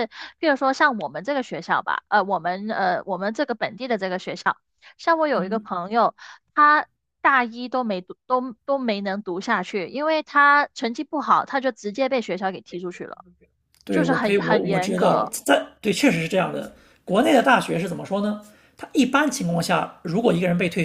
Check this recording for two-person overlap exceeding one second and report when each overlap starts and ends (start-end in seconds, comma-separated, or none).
13.9-15.3